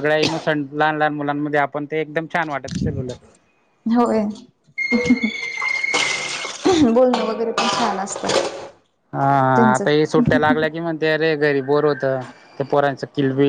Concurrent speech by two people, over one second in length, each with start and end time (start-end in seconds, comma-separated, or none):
none